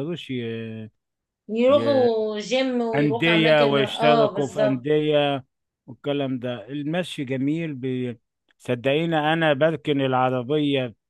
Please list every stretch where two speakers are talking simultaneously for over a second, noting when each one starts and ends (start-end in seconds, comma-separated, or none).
2.9-4.9